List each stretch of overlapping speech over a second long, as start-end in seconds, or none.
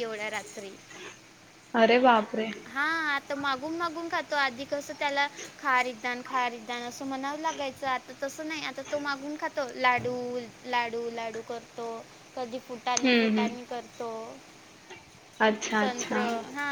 none